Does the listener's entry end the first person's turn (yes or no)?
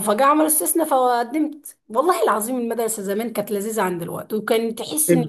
no